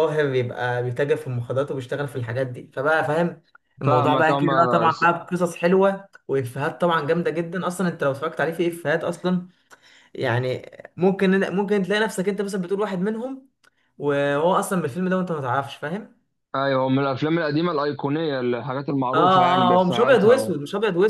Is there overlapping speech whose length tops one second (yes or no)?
yes